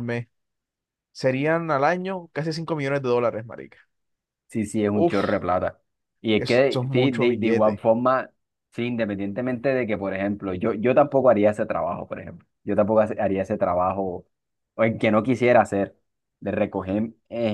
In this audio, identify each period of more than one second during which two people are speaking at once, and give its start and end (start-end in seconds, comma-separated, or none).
6.4-7.8